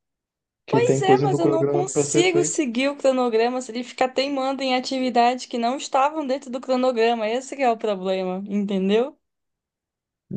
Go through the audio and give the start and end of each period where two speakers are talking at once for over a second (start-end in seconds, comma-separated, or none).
0.7-2.6